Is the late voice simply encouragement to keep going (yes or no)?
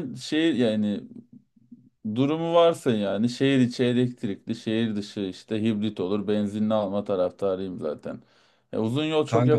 yes